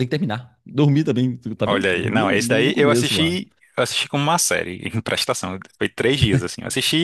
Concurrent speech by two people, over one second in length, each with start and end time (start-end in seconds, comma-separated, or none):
1.6-3.4